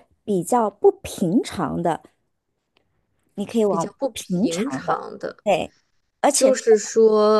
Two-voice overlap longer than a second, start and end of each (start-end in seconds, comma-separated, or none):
3.7-5.0